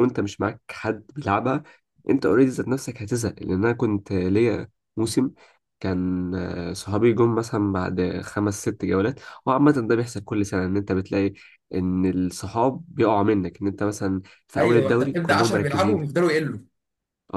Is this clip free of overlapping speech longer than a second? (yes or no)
no